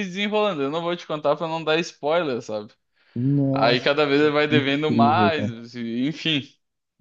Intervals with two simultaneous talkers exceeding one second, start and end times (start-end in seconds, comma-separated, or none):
3.5-5.5